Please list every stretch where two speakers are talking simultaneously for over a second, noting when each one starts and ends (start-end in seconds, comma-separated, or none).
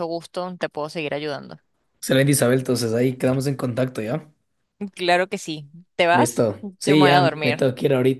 6.1-7.7